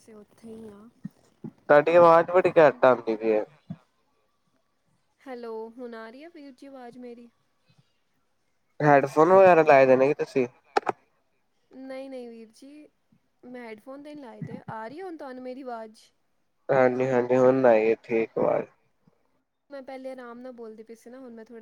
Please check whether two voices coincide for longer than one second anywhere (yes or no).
no